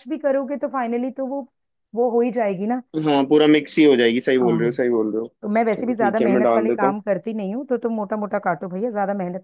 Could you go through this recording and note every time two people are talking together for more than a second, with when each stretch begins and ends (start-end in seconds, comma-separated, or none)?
5.7-6.9